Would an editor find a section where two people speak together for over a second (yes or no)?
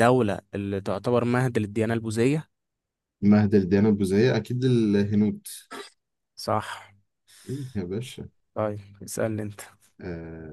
no